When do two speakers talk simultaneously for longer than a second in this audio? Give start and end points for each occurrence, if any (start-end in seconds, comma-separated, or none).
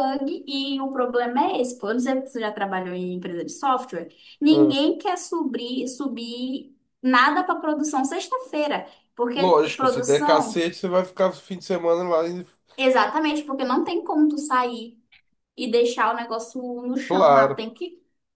9.4-10.7